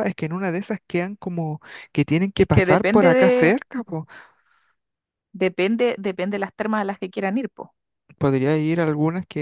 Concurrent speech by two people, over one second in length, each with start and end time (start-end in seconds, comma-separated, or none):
2.4-3.6